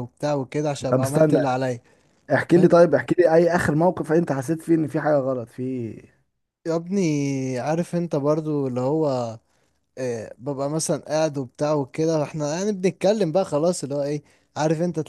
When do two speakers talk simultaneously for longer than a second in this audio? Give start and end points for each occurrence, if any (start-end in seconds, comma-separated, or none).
none